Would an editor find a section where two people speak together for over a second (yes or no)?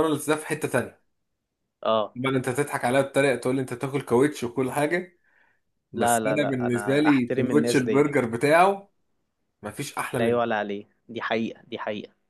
yes